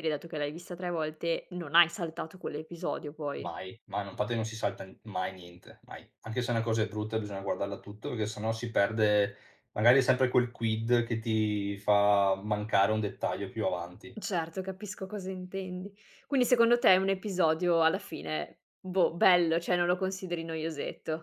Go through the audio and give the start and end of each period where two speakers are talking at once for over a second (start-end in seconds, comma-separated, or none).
none